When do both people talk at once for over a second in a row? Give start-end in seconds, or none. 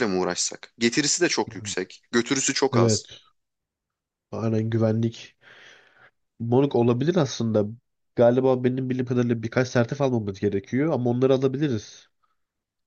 none